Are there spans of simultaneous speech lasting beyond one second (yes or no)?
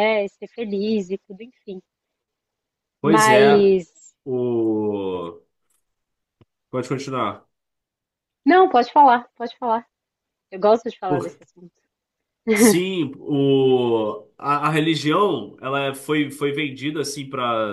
no